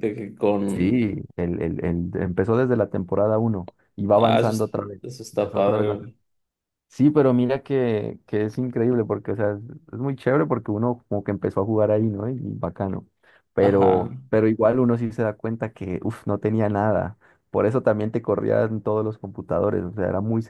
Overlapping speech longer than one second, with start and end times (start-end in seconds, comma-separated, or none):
4.1-6.1